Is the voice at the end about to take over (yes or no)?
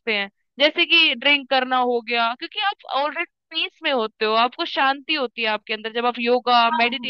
yes